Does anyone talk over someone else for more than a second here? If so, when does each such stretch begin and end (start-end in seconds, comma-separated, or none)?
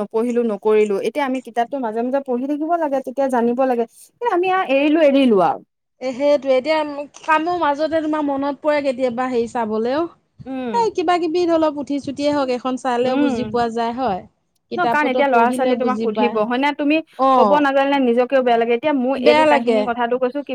14.8-16.4